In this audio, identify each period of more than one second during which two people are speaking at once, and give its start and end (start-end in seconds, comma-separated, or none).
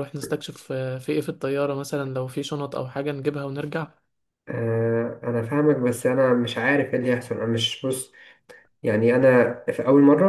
none